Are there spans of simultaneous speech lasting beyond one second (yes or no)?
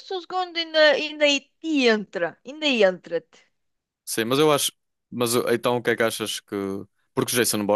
no